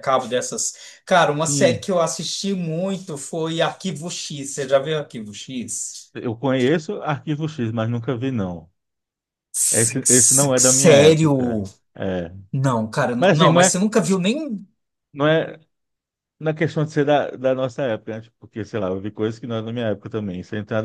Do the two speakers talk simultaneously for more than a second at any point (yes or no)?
yes